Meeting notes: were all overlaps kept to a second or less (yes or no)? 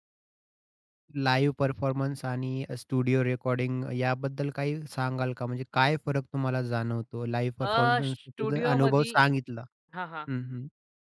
no